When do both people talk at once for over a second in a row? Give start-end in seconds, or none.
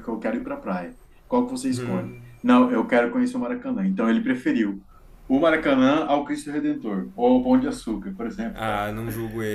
none